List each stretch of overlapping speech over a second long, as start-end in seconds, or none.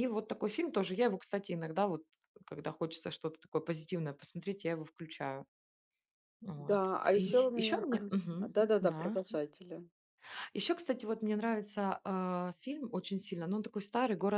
6.6-9.2